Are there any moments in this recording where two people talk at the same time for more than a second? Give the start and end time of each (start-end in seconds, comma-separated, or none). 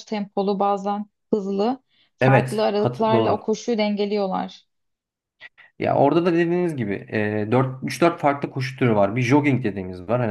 2.2-3.5